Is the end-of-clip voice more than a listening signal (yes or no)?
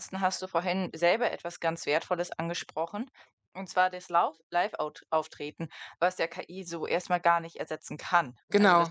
no